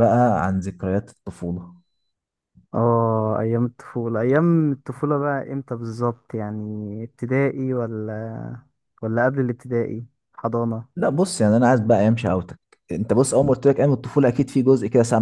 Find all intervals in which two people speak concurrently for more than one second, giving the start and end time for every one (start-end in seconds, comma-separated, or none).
none